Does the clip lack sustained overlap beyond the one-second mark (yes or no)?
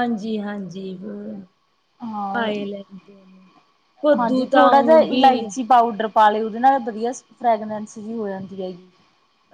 no